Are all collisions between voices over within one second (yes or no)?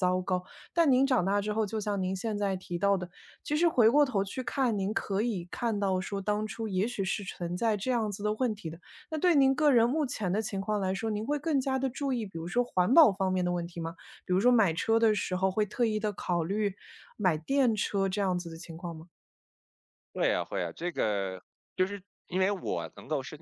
yes